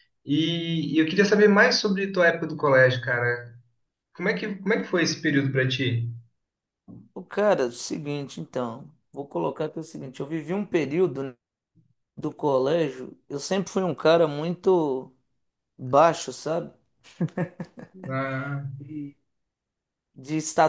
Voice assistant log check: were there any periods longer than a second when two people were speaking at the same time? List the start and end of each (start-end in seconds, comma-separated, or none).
none